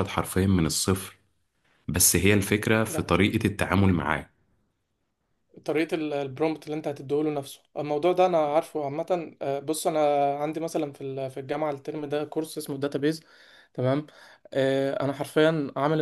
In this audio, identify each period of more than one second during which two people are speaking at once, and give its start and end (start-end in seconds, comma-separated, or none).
none